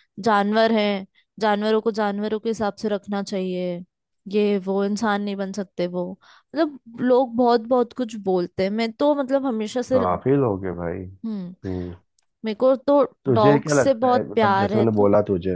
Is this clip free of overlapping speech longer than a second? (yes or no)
no